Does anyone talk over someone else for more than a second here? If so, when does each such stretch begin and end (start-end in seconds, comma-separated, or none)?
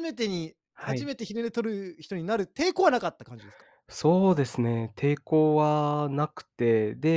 none